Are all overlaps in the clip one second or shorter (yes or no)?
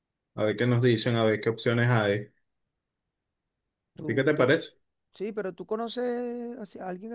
yes